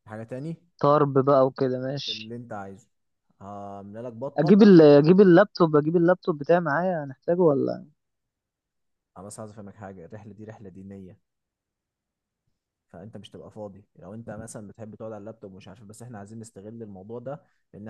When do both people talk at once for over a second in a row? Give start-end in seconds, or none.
none